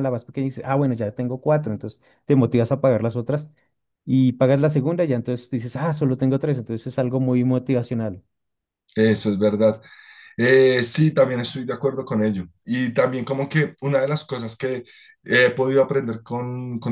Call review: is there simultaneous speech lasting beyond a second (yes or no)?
no